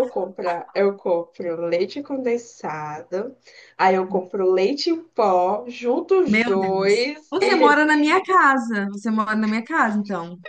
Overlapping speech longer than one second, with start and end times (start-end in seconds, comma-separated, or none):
6.2-8.0